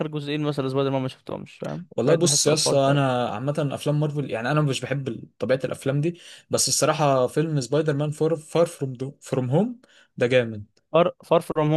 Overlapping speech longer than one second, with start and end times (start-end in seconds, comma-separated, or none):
2.0-3.2